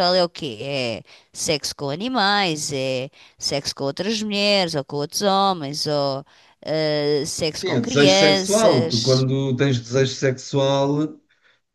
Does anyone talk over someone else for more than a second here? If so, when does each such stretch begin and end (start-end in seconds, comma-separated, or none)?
7.6-9.3